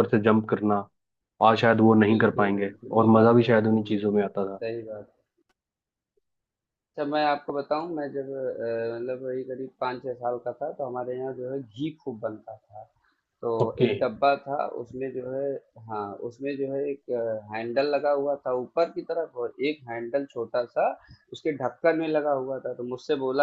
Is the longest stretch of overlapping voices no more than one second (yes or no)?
no